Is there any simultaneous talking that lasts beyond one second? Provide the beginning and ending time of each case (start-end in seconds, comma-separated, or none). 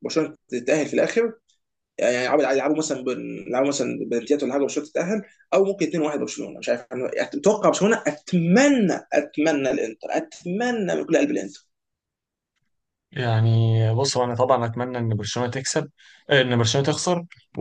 none